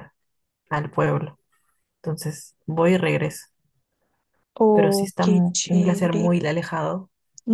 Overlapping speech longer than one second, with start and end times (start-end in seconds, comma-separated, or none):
4.7-6.3